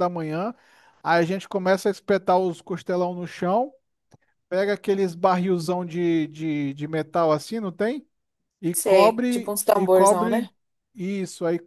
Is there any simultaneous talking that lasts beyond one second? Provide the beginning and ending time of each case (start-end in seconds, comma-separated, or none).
8.7-10.5